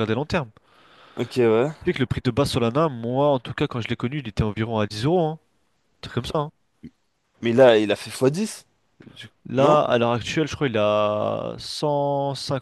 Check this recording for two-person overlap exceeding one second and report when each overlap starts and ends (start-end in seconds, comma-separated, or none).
none